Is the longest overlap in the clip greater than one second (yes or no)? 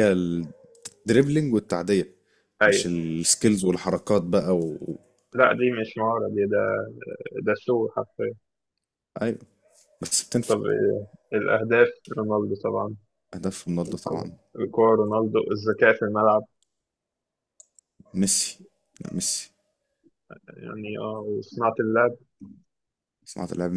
no